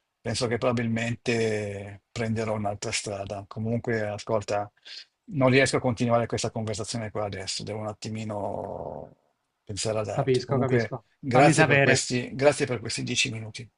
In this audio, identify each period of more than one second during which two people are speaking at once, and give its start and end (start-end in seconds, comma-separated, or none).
10.1-12.1